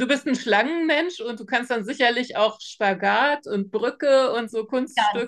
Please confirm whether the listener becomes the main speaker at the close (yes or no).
yes